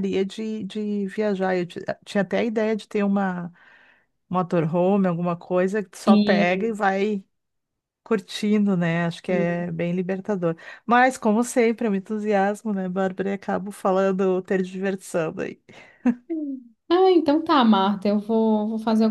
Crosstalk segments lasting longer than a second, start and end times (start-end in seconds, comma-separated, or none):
none